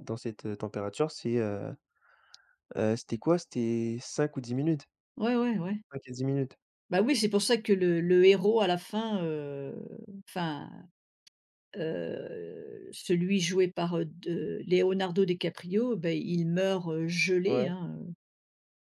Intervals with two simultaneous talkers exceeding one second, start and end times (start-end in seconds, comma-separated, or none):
none